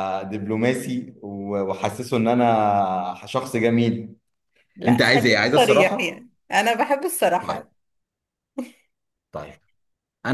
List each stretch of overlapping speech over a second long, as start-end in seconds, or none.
4.9-6.3